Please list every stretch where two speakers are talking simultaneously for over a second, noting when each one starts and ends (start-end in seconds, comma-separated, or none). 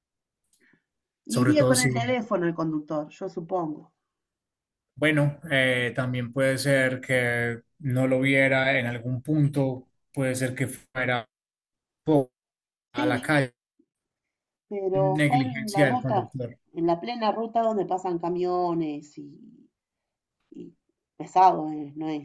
14.9-16.3